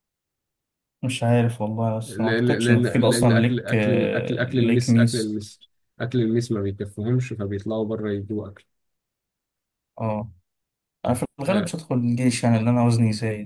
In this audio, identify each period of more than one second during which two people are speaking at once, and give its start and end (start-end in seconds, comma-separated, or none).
2.0-5.4